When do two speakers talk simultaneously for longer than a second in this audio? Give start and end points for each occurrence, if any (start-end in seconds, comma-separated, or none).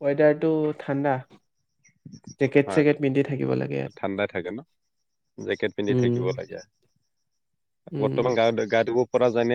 none